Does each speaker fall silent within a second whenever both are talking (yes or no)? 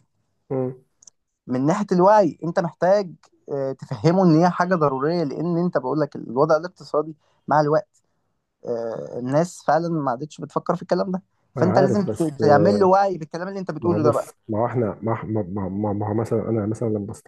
no